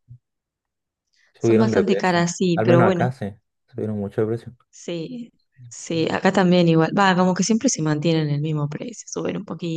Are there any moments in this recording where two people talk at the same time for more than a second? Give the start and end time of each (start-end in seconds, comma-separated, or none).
1.4-3.1